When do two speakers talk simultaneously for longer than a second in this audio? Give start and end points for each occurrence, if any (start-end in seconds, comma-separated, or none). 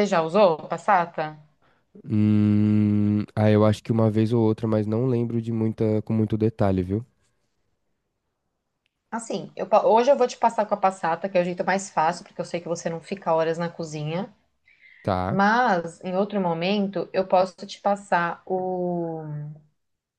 none